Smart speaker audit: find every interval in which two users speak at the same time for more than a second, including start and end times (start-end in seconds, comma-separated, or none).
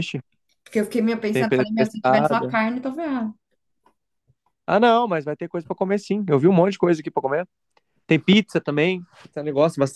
1.3-2.6